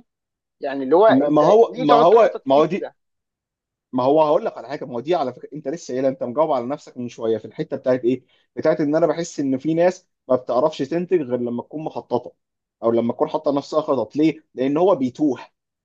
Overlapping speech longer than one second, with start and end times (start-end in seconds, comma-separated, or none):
1.1-2.9